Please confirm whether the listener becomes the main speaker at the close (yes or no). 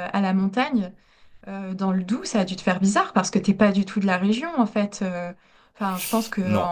no